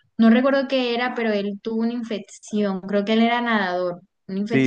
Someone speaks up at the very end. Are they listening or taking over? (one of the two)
taking over